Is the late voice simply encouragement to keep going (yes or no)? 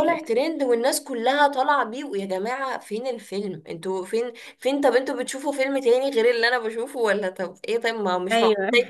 yes